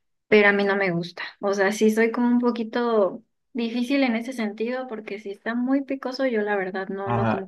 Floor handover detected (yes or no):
yes